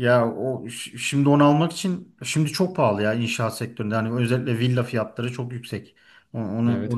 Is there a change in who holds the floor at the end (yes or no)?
no